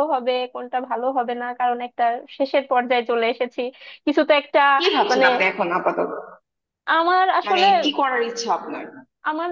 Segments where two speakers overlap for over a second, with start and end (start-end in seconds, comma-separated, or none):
none